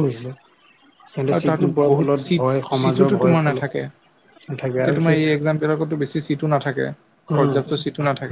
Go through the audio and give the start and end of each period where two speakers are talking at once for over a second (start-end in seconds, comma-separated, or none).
1.4-3.6